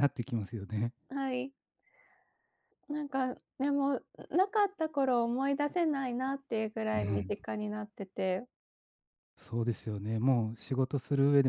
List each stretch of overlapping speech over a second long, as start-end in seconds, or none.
none